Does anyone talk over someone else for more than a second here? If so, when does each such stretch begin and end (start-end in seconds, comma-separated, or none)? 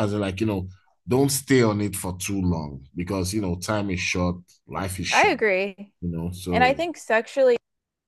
none